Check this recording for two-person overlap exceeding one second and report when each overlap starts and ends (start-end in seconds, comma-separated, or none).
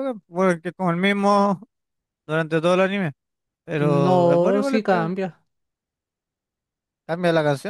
3.8-5.1